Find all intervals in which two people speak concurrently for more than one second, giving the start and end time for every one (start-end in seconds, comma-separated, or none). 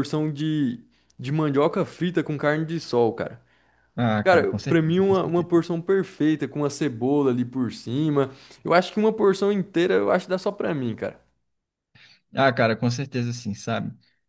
4.2-5.5